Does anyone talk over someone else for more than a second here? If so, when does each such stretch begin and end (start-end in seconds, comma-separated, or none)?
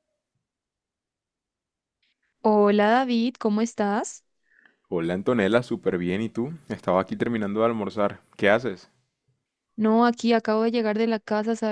none